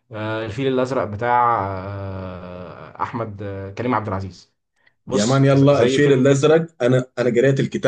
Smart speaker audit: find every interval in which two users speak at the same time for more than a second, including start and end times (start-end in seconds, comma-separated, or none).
5.1-6.5